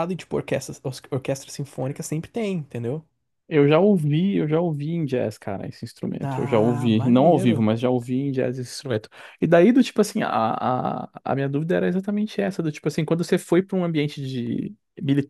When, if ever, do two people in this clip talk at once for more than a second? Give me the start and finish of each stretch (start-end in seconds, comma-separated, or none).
6.2-7.7